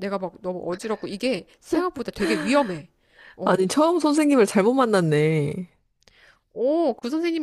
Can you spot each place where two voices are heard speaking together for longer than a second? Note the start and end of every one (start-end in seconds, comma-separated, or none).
none